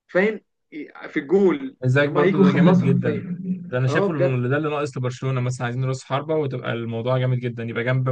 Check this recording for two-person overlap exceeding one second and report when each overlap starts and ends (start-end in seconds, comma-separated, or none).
1.8-3.2